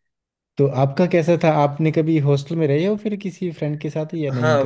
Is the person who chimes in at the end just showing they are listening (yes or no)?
no